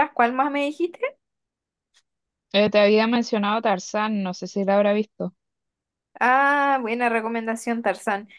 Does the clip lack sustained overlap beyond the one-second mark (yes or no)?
yes